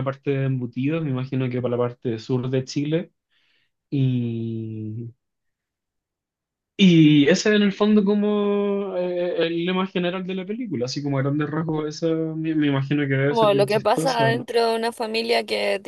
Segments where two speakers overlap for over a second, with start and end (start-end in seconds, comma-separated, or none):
13.3-14.5